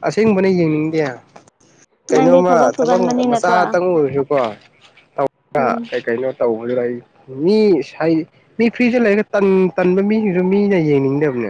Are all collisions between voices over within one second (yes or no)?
no